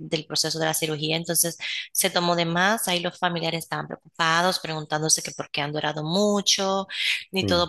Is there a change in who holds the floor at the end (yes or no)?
no